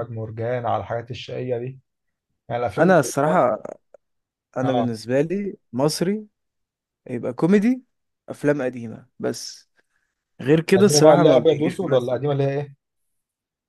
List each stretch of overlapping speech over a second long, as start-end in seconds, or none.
10.8-12.2